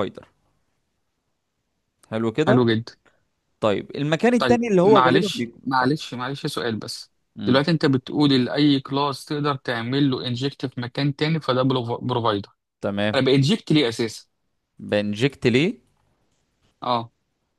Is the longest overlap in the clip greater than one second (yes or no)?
yes